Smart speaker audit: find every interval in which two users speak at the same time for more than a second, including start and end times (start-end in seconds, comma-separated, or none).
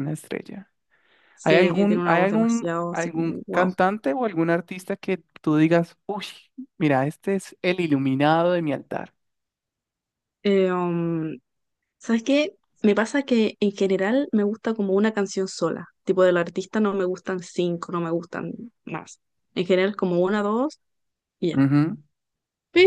1.4-3.7